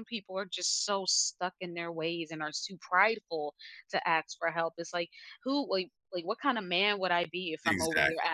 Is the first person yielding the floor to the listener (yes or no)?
no